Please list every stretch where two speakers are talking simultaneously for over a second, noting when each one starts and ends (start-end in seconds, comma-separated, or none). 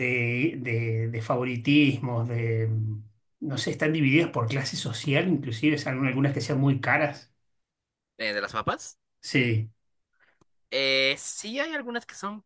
none